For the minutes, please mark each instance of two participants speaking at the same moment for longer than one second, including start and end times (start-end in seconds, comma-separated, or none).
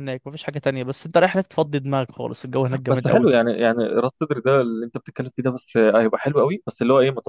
none